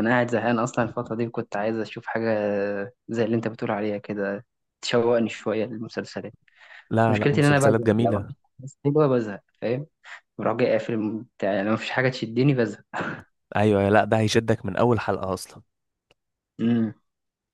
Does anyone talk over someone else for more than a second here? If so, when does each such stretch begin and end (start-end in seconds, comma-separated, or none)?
7.1-8.3